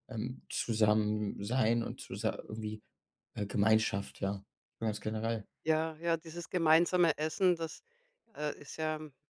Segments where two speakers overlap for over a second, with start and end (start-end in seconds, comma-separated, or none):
none